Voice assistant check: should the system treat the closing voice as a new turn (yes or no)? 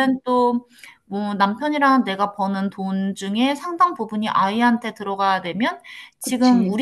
no